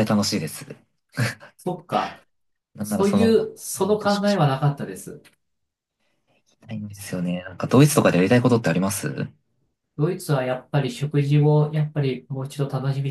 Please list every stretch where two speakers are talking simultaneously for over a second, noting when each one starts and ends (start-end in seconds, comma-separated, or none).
2.8-4.5